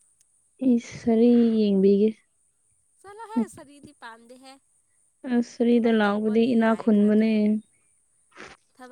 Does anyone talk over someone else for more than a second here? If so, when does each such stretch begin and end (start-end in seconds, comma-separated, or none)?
5.7-7.4